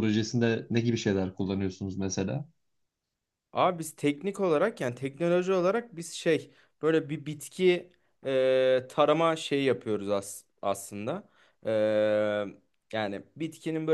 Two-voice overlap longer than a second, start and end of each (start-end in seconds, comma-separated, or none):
none